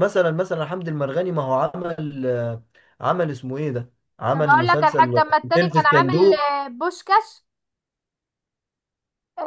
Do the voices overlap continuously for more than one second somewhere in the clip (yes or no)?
yes